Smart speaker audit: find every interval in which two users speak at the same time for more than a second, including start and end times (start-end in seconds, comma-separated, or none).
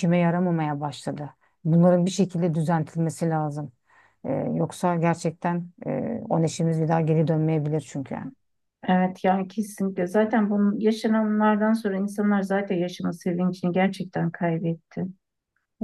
none